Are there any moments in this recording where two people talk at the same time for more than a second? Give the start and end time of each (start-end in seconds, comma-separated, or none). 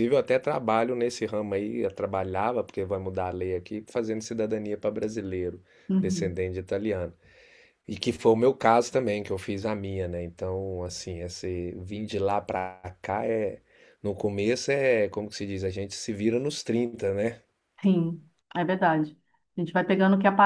none